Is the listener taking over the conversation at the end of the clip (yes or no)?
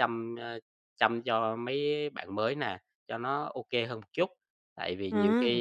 no